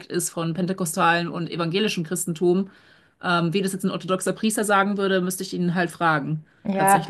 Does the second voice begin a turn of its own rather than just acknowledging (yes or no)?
yes